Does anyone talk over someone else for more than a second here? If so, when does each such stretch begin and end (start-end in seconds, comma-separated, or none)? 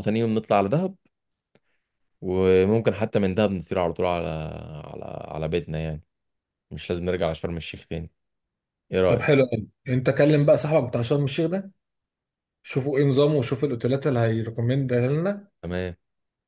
none